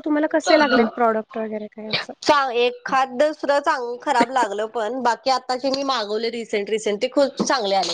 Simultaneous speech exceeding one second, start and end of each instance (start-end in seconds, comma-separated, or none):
none